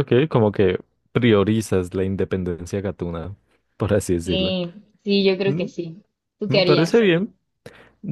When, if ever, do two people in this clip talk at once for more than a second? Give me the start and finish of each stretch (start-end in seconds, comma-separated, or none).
none